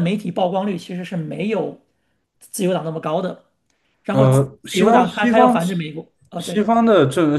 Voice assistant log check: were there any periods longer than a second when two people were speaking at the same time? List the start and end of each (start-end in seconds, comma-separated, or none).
4.1-5.5